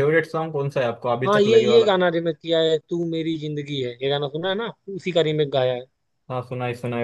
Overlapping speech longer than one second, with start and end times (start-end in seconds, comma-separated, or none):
none